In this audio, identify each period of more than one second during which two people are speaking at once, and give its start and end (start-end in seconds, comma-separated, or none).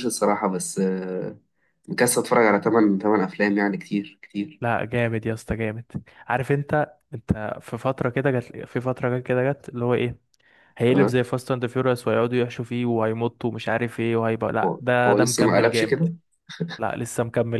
14.6-15.9